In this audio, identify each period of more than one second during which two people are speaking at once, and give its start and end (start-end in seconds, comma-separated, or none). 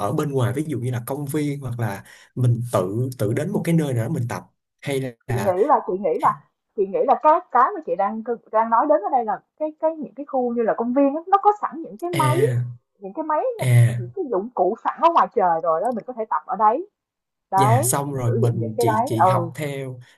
17.6-19.5